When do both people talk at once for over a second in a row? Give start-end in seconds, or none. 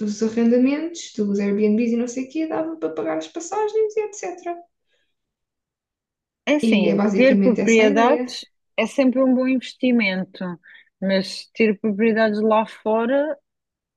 6.7-8.2